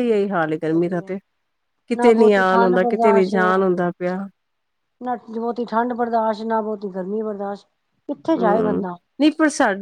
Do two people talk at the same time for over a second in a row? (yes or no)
yes